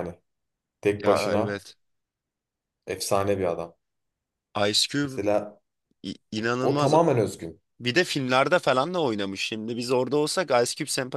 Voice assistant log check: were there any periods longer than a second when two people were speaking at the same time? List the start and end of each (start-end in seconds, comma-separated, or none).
none